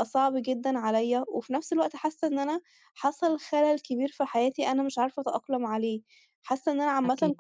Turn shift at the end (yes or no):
no